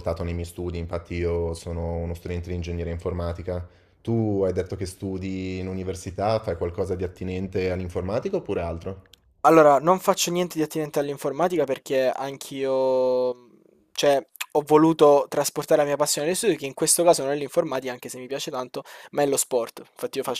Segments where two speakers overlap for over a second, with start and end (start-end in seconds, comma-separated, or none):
none